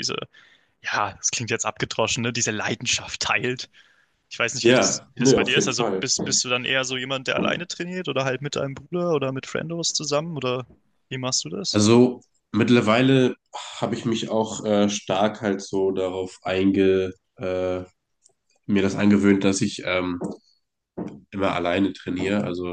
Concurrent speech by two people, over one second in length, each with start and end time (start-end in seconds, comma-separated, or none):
4.6-6.1